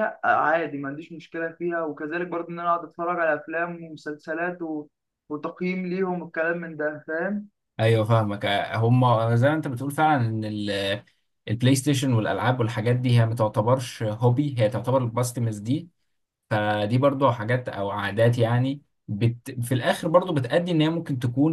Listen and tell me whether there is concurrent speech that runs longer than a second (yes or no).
no